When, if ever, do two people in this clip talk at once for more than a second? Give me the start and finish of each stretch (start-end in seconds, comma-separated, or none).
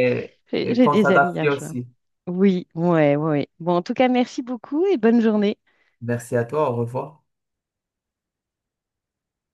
0.5-1.8